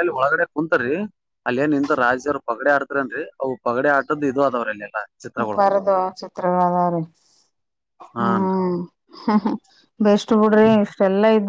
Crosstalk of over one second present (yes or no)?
no